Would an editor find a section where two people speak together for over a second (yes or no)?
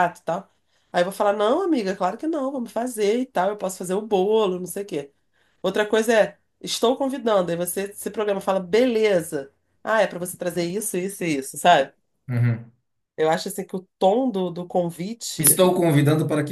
no